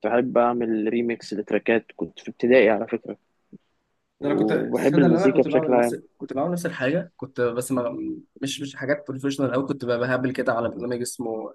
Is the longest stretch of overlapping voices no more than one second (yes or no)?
no